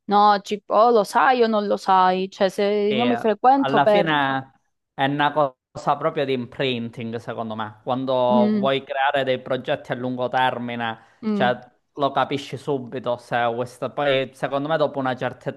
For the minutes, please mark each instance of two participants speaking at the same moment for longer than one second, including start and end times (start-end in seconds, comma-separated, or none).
2.9-4.1